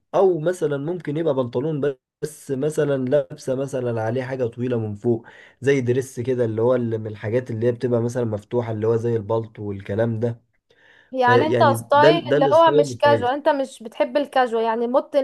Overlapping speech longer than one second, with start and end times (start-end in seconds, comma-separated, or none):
11.2-13.3